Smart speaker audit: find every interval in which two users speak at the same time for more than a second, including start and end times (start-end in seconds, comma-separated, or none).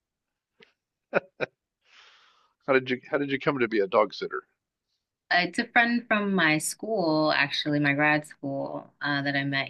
none